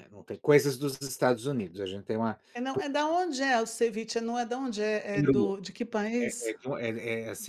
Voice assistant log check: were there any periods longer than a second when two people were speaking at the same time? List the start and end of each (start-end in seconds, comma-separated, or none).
none